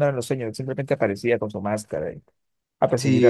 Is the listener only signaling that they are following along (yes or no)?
no